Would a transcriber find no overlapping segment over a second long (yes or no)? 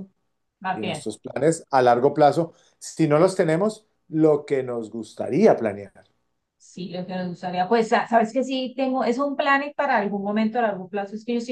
yes